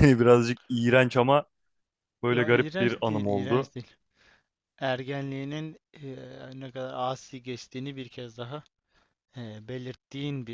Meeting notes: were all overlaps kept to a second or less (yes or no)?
no